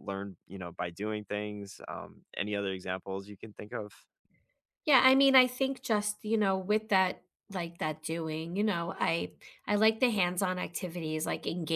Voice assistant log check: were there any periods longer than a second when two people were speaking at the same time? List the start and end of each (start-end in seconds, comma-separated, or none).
none